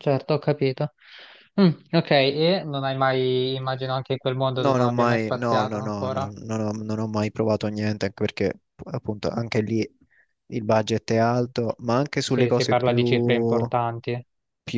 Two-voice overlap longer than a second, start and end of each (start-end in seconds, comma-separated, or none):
4.6-6.3, 12.3-13.7